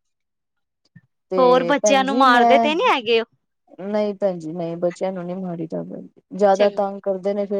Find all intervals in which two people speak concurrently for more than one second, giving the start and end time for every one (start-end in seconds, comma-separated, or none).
1.4-2.7